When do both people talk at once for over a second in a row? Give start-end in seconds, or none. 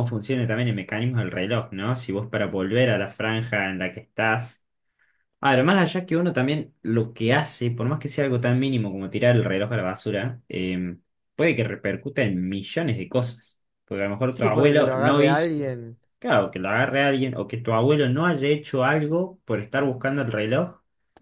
14.3-15.8